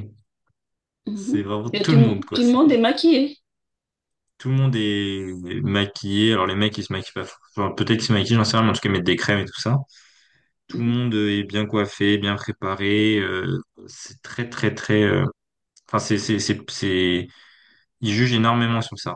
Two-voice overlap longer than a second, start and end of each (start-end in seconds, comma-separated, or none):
1.1-2.6